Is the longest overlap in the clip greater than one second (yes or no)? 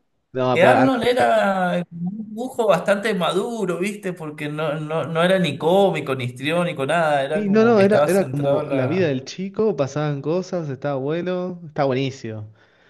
yes